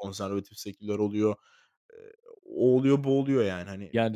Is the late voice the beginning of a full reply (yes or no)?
yes